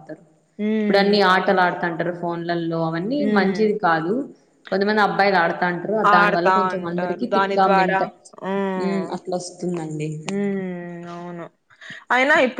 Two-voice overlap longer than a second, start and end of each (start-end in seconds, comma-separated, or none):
6.2-8.0